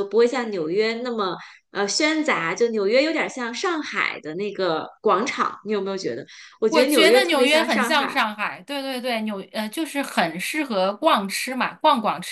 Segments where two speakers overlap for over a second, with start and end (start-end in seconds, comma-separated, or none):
6.7-8.2